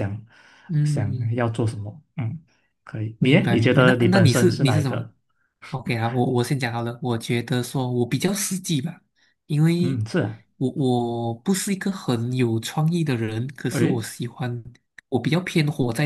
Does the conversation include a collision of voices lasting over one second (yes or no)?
yes